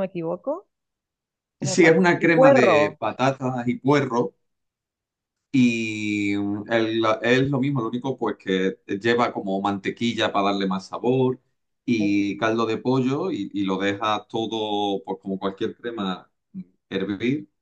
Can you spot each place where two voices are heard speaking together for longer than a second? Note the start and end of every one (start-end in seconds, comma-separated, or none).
1.6-3.0